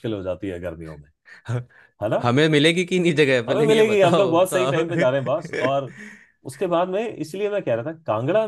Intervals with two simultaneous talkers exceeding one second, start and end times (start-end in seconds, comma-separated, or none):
3.5-4.8